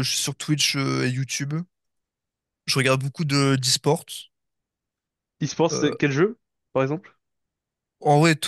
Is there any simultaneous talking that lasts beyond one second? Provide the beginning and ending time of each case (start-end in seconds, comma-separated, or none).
none